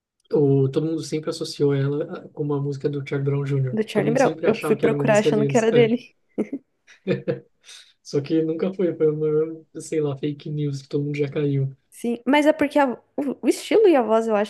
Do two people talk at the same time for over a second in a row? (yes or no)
yes